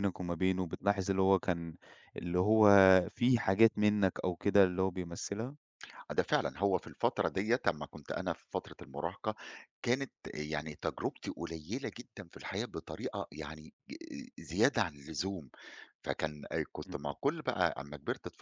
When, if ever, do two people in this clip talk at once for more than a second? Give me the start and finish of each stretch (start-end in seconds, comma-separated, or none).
none